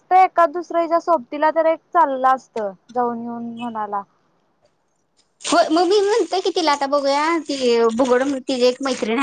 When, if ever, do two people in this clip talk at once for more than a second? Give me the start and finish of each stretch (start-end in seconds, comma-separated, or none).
none